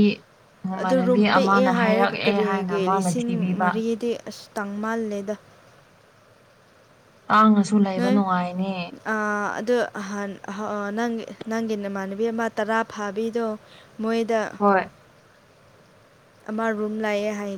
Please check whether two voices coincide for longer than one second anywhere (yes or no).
yes